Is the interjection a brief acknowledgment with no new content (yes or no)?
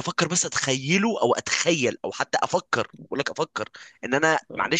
yes